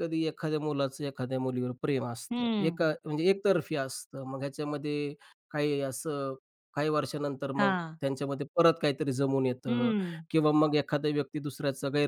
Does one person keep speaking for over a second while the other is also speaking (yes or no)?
no